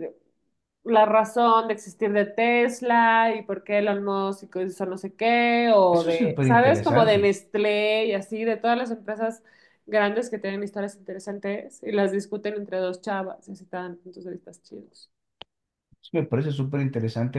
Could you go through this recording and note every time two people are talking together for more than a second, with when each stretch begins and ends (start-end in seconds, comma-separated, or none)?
5.9-7.3